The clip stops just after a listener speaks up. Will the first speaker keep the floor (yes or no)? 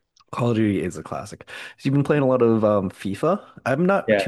yes